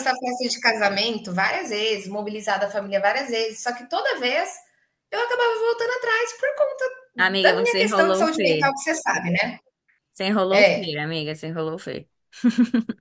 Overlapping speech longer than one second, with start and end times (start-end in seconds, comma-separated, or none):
7.4-8.7